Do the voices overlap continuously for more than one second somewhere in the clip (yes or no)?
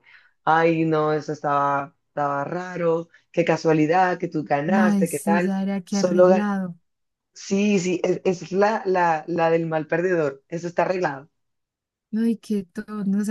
yes